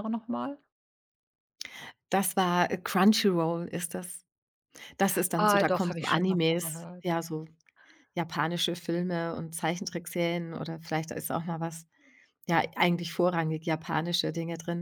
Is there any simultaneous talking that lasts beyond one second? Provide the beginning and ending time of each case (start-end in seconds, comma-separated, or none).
5.3-7.2